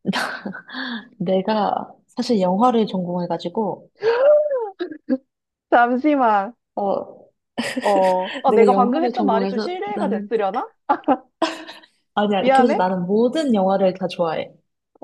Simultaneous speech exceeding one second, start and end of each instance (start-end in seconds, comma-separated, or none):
8.5-10.3